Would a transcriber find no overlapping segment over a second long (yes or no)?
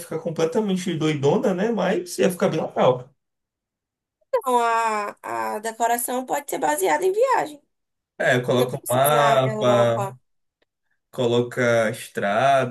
no